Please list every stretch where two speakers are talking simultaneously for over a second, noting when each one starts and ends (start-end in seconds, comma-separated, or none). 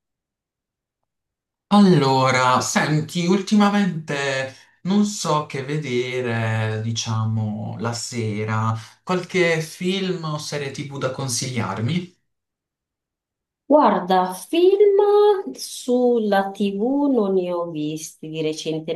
none